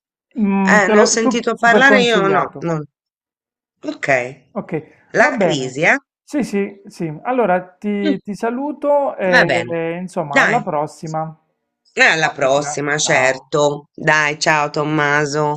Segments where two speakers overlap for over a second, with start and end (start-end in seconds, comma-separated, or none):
0.6-2.7, 12.2-13.5